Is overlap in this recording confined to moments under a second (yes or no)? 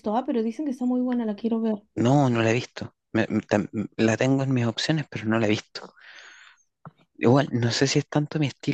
yes